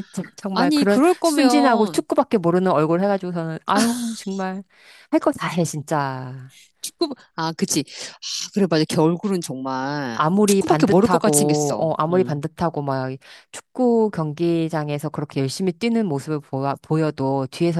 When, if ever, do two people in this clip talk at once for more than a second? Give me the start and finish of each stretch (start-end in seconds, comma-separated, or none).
0.5-2.0, 10.2-12.4